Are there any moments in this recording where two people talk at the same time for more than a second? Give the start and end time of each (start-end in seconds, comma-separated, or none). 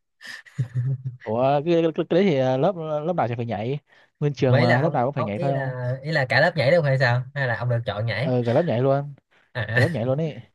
4.5-5.7